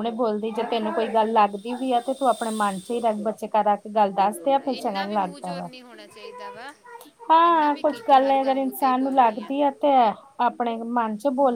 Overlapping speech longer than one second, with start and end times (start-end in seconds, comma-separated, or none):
4.3-5.7, 7.5-9.5